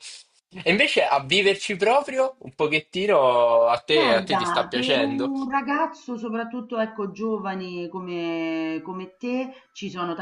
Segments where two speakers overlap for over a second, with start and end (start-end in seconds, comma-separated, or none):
3.9-5.3